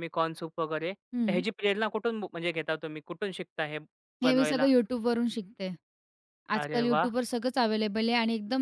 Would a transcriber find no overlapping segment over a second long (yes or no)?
yes